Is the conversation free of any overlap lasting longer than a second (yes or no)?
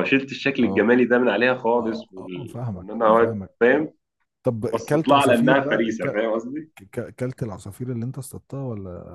no